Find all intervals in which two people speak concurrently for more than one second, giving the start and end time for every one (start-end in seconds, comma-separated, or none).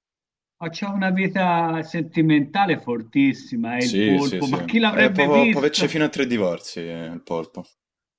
3.7-6.0